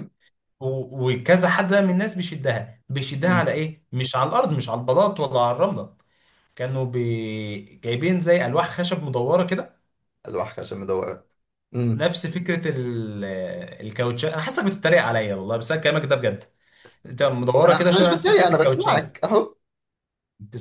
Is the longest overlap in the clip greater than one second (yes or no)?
yes